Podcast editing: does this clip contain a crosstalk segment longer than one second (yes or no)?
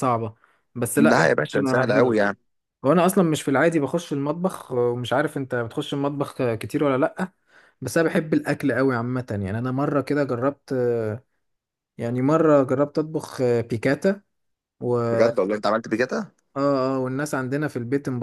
yes